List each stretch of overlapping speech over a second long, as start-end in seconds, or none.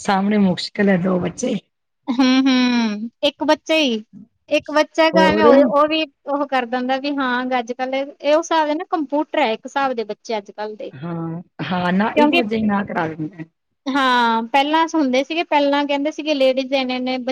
none